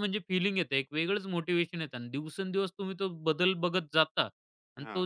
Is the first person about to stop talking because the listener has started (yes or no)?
no